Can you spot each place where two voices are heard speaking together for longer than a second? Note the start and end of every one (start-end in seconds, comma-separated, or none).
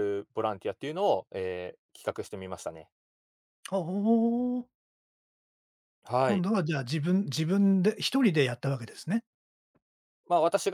none